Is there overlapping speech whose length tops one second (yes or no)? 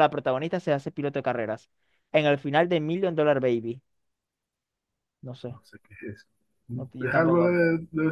no